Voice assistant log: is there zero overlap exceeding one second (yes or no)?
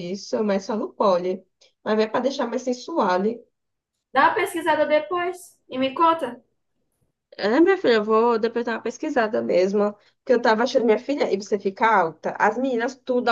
yes